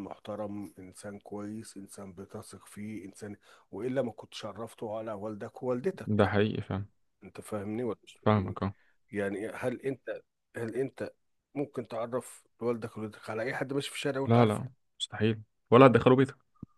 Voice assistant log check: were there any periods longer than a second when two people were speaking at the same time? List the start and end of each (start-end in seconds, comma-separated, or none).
none